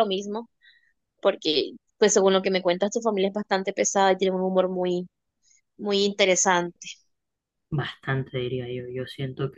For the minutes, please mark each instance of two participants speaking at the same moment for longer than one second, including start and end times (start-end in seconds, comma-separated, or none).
none